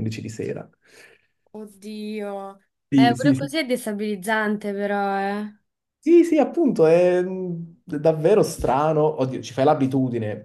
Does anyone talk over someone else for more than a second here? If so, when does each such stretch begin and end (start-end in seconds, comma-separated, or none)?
none